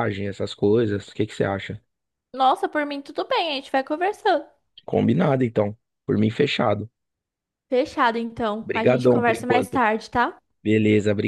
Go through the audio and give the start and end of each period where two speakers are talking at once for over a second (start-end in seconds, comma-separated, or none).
8.6-9.8